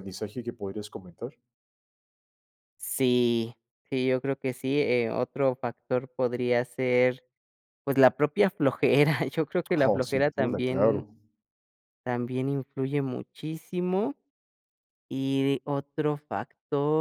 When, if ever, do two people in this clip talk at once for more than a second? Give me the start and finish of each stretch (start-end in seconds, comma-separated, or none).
9.7-11.1